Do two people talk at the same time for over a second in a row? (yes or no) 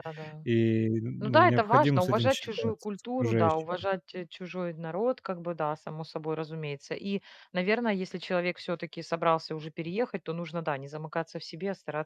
yes